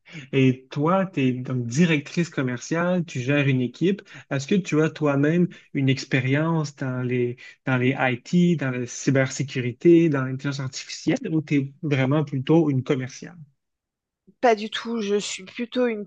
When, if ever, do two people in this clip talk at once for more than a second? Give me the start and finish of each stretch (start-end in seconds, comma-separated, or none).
none